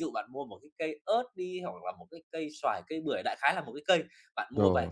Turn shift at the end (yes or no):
no